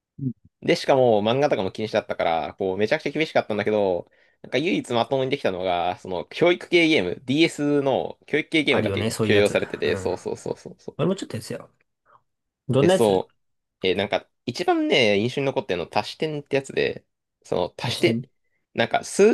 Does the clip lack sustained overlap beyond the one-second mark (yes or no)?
no